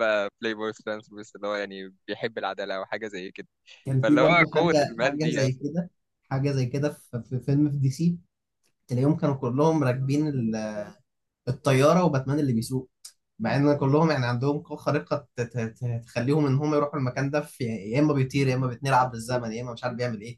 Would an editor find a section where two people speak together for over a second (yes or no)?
yes